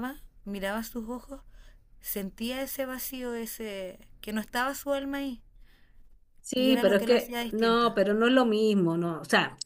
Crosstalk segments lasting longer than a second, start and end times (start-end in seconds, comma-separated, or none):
6.6-7.9